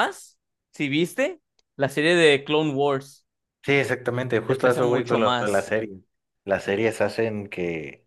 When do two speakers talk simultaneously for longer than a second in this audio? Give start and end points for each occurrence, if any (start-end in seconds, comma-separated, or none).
4.5-5.7